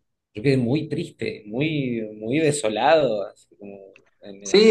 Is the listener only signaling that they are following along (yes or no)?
no